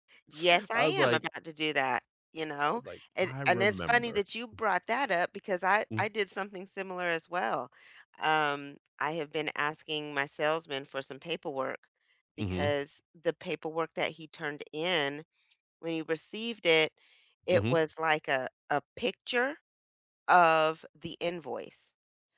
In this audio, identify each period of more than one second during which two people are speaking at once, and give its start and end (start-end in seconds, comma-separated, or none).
2.7-4.3